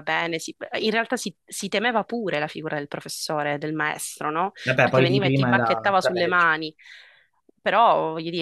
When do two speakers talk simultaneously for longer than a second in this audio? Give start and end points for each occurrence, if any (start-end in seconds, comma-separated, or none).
4.6-6.5